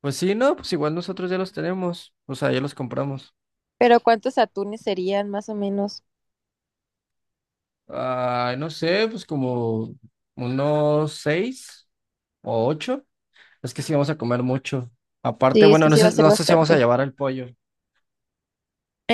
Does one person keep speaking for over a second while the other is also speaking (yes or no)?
yes